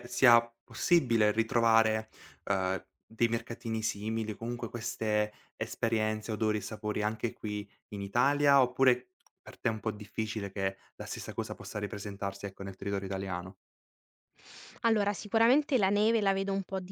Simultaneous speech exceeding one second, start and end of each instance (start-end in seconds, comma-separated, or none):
none